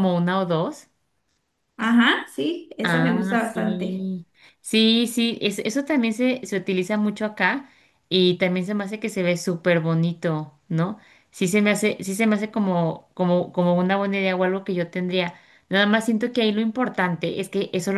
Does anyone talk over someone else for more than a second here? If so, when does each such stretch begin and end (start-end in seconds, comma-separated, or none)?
2.9-4.1